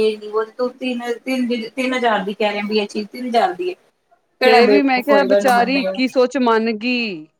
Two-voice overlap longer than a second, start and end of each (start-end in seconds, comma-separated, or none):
4.4-6.0